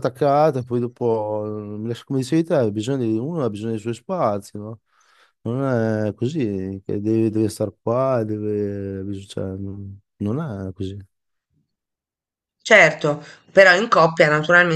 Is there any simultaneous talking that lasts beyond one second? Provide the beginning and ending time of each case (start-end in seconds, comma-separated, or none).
none